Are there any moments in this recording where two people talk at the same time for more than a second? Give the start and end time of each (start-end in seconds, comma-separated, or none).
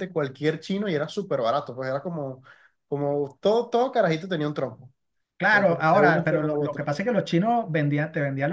5.5-6.8